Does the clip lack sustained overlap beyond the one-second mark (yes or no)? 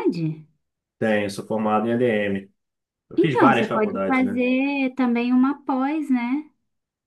no